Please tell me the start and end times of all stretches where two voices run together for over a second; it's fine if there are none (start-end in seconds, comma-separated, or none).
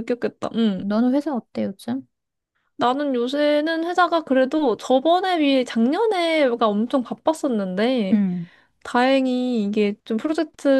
none